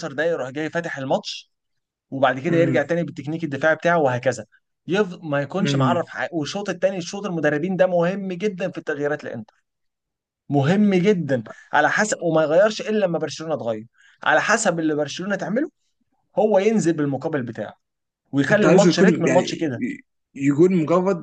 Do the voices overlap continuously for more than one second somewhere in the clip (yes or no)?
yes